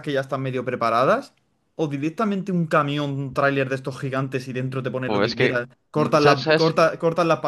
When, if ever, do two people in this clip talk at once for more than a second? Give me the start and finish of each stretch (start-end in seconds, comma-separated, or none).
5.0-6.8